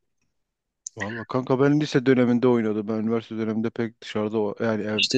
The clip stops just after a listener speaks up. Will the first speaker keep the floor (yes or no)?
yes